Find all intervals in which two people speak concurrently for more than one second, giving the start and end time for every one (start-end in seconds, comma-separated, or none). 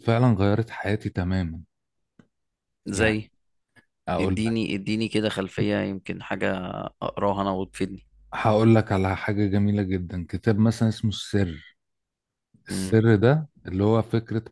none